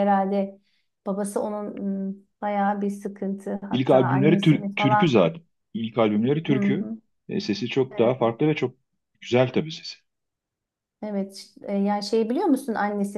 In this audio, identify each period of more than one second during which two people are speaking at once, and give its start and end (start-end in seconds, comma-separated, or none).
3.7-5.3